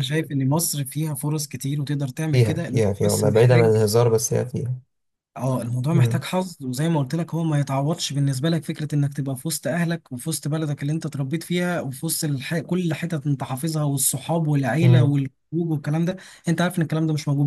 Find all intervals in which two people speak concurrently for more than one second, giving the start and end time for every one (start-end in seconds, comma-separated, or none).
2.3-3.8